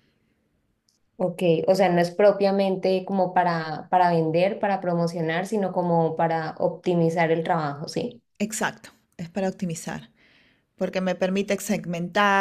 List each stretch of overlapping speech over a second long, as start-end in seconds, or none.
none